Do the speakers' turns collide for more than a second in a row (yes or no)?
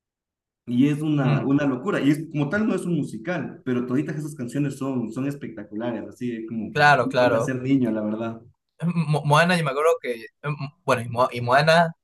no